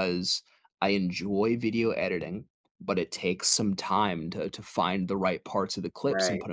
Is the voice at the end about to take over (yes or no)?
no